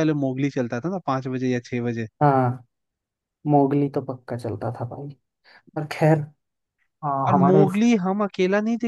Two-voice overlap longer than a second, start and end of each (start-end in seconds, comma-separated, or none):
none